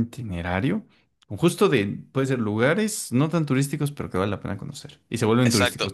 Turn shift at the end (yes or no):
yes